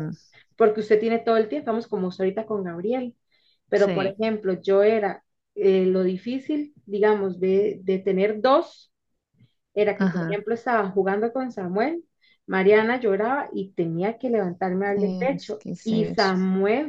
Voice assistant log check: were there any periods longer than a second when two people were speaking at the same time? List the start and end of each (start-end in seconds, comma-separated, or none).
14.9-16.3